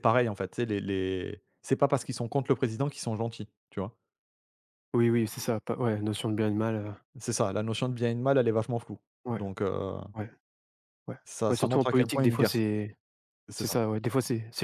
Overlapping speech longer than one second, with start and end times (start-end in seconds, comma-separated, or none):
11.2-12.6